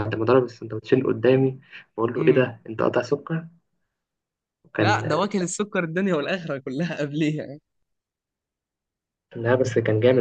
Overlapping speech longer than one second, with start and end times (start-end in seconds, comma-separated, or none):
none